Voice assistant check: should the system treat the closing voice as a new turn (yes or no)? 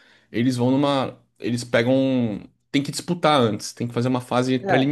yes